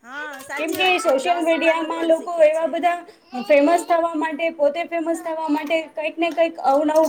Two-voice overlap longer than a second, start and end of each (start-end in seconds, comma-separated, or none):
0.6-3.0